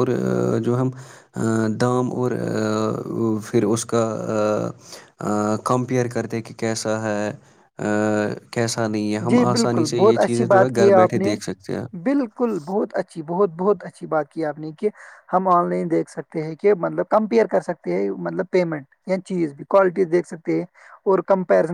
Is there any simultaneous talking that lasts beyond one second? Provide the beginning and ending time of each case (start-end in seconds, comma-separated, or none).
9.3-11.3